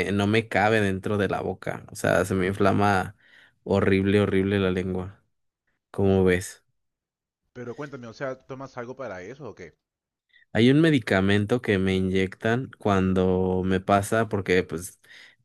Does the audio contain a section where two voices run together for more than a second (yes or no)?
no